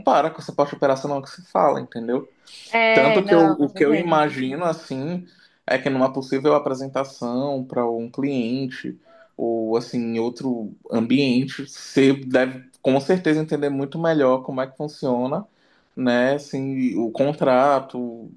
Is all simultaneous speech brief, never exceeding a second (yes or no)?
no